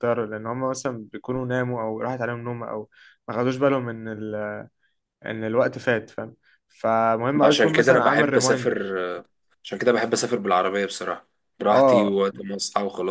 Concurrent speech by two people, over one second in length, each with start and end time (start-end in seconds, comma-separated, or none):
7.4-9.0